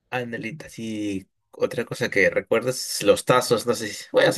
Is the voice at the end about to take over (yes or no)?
no